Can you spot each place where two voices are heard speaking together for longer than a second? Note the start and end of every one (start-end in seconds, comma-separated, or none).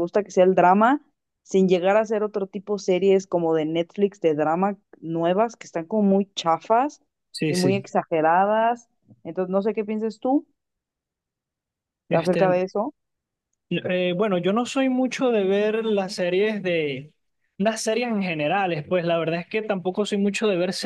none